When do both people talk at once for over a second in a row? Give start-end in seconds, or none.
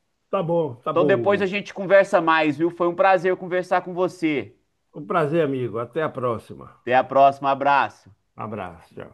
none